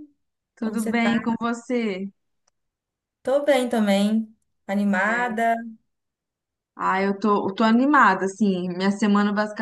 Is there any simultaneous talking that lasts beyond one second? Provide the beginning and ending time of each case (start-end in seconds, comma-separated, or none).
none